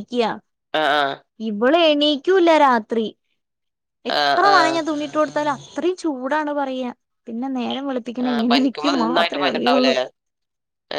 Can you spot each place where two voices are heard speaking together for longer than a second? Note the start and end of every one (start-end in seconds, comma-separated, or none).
8.3-9.9